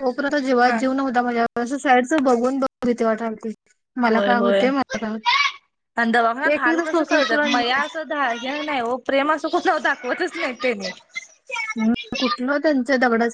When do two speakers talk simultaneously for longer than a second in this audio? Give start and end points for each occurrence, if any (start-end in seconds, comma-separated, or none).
6.3-7.6